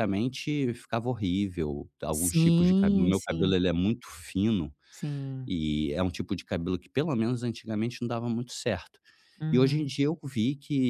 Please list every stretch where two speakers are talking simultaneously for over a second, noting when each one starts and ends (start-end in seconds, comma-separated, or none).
2.1-3.5